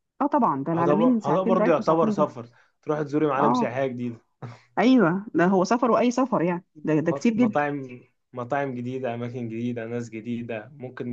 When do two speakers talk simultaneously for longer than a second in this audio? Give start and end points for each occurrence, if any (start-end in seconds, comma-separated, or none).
0.8-2.3